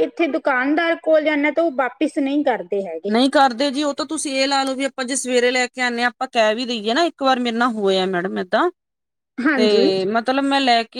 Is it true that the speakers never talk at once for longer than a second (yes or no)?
yes